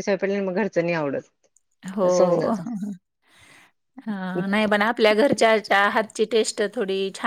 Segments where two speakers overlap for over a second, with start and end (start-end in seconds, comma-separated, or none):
none